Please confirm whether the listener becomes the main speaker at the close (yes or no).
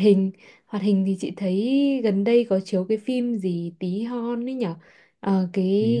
no